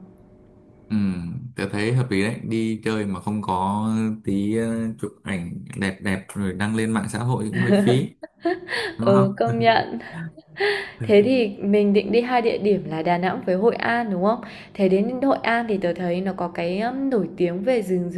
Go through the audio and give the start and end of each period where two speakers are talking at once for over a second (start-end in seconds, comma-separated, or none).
none